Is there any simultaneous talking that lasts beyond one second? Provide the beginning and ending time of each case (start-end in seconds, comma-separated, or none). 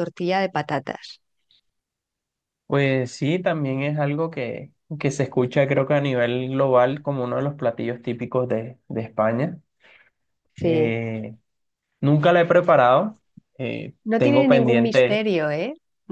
14.0-15.2